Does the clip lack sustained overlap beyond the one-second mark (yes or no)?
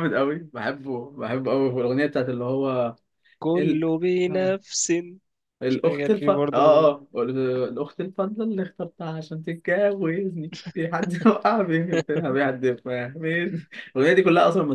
no